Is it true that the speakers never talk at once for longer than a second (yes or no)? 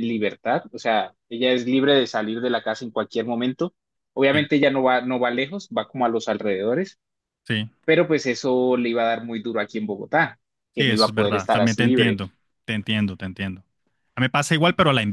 no